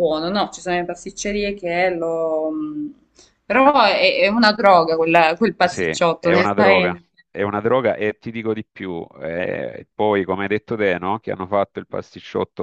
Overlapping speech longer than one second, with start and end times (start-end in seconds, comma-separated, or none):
5.6-7.1